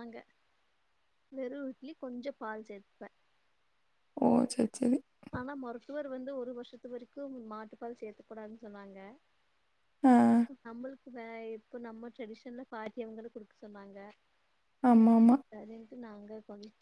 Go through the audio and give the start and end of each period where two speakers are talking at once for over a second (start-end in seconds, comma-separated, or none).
none